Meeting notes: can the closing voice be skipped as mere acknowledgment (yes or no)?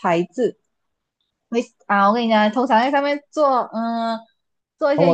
no